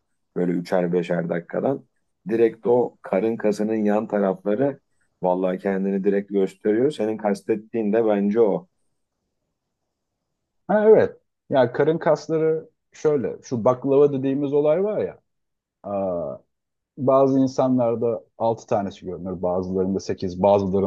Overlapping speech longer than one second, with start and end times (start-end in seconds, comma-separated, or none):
none